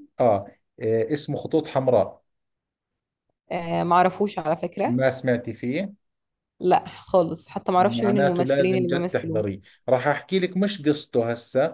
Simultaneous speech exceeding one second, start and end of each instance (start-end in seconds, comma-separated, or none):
7.8-9.4